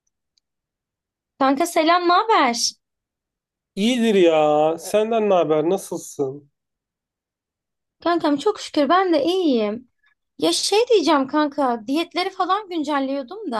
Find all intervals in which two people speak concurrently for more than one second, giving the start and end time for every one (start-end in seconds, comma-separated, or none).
none